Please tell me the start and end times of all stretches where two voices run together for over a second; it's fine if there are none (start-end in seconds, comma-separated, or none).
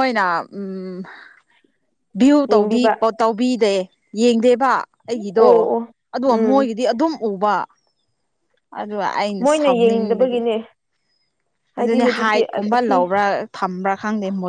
11.8-13.1